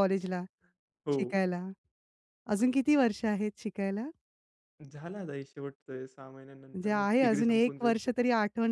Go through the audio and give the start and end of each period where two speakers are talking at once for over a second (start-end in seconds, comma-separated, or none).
6.7-7.9